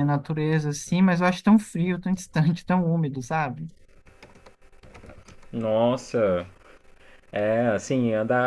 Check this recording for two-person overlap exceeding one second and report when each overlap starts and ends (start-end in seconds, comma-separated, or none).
none